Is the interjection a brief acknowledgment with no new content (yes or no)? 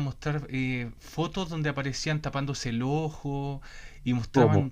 yes